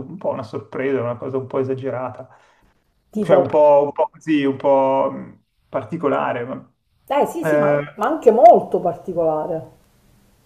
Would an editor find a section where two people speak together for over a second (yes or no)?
no